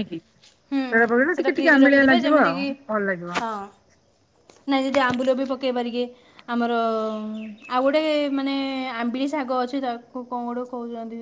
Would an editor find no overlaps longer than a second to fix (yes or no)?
no